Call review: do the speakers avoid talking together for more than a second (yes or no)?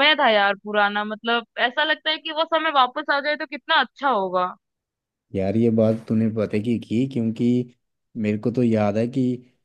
yes